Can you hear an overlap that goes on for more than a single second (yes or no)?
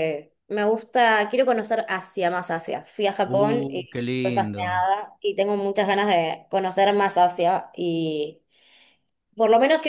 yes